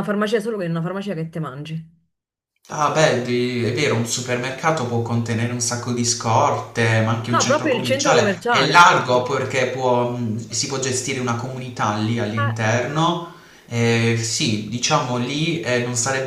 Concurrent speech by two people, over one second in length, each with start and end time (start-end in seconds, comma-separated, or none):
7.3-8.9